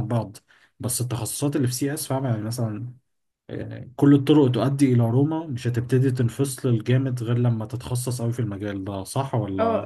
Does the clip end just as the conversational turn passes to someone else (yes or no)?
yes